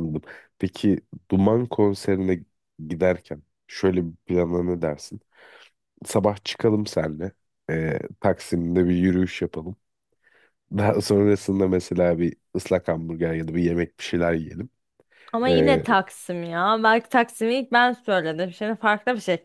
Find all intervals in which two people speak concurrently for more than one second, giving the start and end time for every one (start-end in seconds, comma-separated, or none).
none